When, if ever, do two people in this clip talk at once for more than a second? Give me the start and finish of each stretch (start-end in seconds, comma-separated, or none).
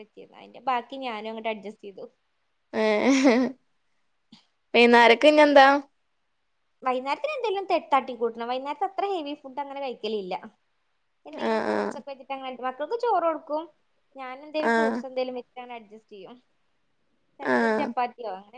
none